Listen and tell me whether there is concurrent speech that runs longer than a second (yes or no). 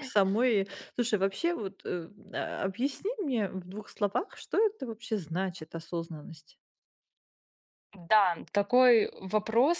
no